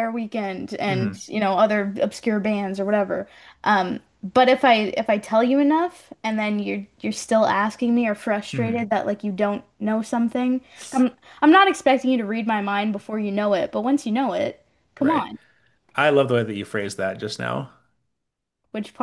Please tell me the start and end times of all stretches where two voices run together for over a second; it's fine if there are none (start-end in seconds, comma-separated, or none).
none